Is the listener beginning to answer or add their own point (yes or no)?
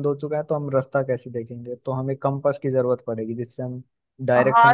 yes